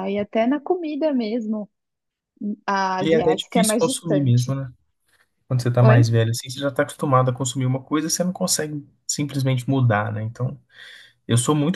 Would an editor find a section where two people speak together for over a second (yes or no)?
yes